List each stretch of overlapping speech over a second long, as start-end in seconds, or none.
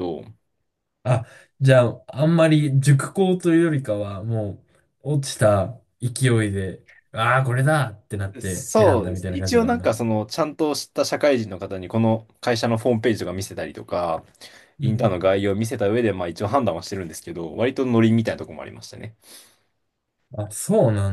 8.4-9.9